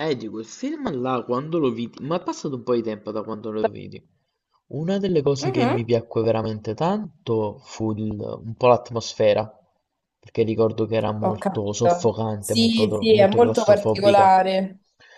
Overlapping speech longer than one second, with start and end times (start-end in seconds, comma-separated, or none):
11.2-14.3